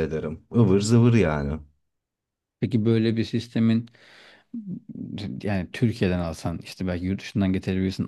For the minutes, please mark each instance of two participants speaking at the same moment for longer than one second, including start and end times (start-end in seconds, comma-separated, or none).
none